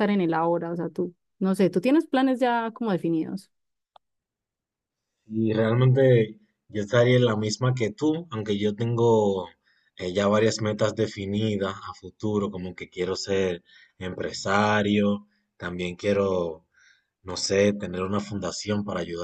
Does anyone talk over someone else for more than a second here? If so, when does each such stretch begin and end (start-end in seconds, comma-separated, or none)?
none